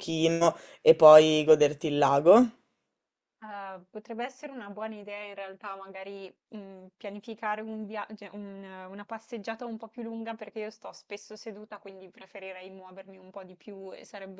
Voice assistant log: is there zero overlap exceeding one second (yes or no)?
yes